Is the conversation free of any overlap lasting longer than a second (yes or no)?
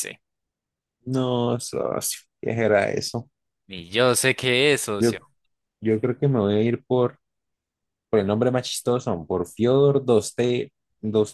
yes